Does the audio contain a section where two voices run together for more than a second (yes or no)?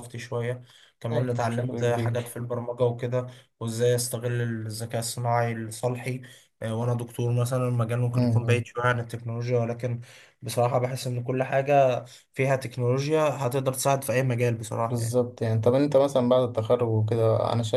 yes